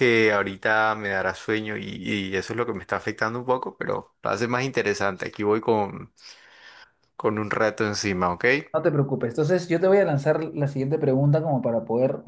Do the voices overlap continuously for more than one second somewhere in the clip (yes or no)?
no